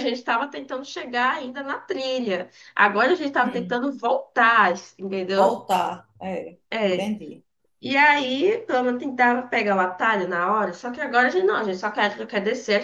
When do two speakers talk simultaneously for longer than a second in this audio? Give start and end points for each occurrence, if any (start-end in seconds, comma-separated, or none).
none